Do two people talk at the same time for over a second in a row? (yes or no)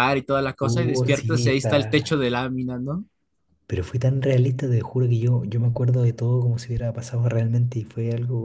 yes